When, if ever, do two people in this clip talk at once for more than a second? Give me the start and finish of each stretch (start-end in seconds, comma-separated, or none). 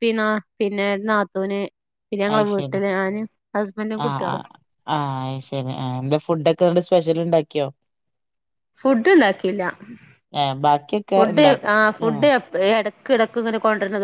none